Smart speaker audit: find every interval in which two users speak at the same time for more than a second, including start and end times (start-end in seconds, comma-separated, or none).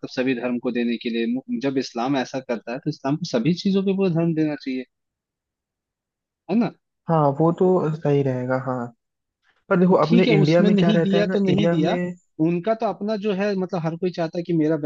9.9-12.0